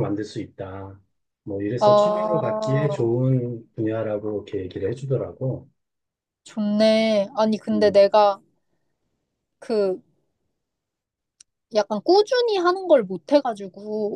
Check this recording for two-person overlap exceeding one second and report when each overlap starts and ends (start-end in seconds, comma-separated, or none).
1.8-3.1